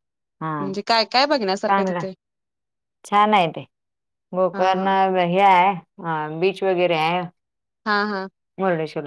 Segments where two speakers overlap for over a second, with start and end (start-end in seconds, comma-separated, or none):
none